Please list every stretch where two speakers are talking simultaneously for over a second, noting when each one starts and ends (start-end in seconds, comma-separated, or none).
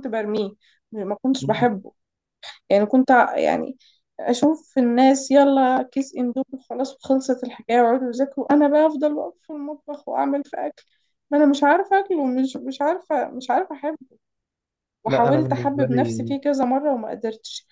15.1-16.3